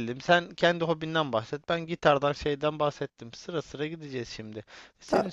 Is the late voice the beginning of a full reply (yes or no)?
no